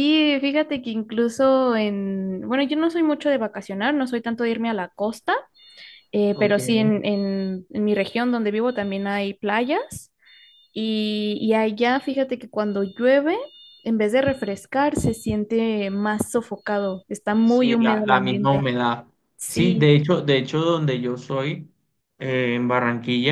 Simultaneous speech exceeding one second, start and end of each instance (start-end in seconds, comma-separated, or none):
17.4-18.7